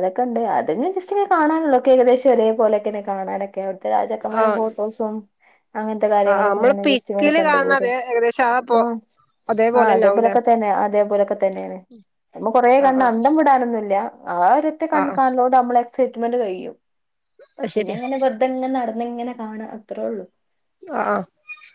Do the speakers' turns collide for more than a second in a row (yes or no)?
yes